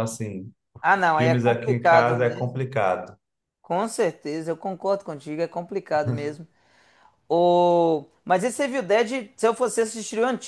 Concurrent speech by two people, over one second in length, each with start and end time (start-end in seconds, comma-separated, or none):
1.1-2.7